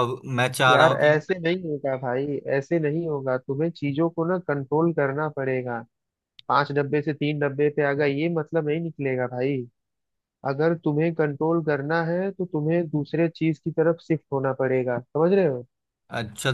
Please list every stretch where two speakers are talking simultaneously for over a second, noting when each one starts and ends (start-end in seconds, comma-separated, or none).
none